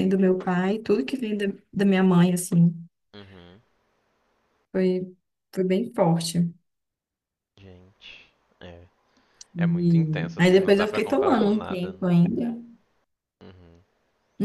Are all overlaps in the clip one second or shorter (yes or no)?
no